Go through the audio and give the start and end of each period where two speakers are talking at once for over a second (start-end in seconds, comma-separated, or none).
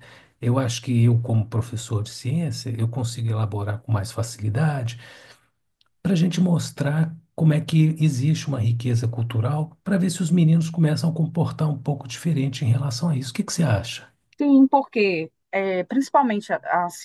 none